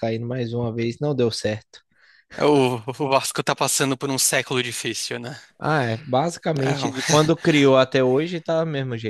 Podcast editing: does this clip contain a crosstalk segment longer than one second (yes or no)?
no